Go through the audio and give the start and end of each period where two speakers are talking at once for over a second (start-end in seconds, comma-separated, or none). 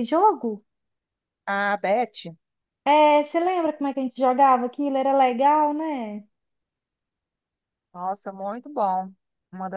none